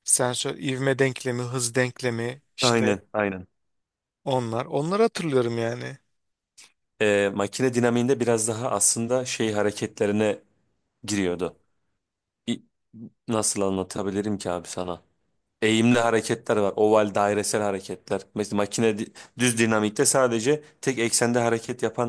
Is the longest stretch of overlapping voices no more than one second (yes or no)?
yes